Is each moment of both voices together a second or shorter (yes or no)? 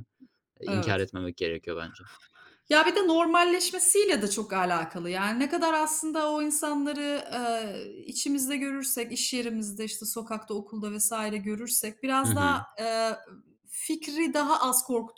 yes